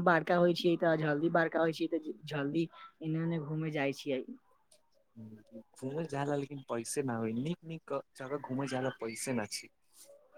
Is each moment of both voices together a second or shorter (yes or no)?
yes